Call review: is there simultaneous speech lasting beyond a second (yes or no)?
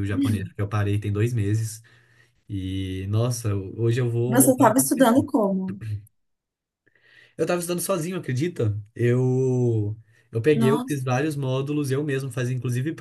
no